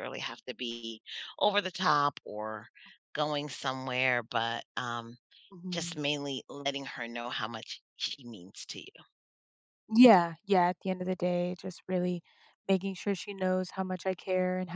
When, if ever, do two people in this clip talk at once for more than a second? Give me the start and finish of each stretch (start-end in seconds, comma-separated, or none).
none